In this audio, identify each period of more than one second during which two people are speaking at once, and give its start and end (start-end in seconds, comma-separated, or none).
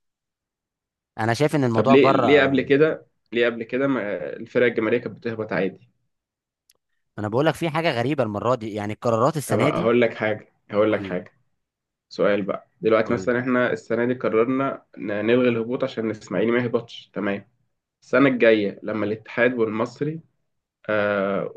none